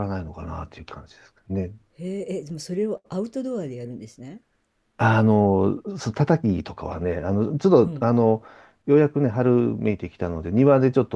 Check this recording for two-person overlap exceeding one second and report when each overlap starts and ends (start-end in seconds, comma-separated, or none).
none